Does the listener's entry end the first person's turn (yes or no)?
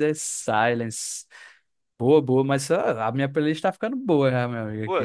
yes